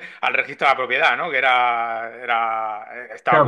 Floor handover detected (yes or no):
yes